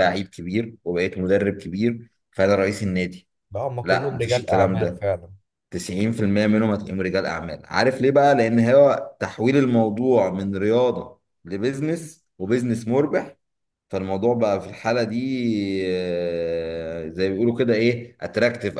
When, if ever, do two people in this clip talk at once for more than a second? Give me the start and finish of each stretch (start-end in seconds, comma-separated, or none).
3.8-5.0